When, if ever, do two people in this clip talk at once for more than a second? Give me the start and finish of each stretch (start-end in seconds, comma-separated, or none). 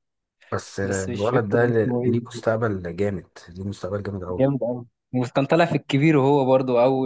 0.8-2.1